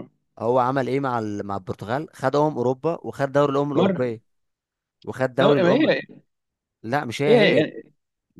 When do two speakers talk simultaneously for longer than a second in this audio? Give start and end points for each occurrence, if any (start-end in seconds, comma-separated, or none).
none